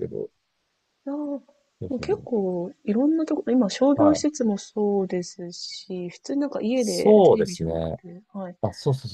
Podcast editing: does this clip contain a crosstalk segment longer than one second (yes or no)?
yes